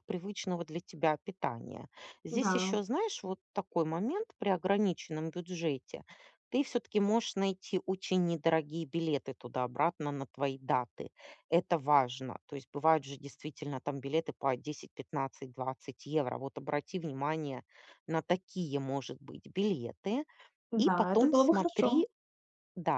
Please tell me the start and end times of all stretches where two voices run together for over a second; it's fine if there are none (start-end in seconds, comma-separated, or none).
20.8-22.0